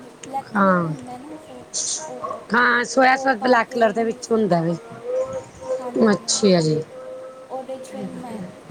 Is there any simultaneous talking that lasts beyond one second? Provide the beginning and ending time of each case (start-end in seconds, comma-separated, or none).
2.5-4.7